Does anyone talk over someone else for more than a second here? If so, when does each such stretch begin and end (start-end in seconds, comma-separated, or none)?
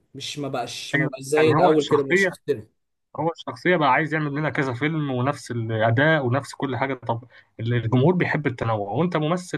0.9-2.3